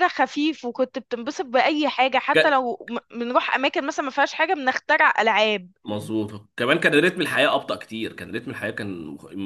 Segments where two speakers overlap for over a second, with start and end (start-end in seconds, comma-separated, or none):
none